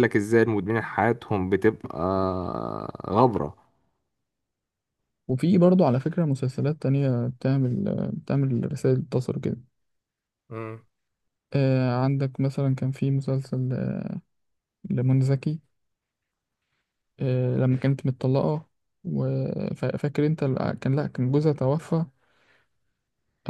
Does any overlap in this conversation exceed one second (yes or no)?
no